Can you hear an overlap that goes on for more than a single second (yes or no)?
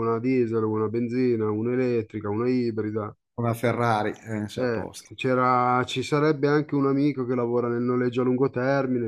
no